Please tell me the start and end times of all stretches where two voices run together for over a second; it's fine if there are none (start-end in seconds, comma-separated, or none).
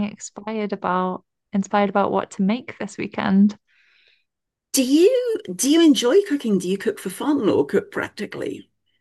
none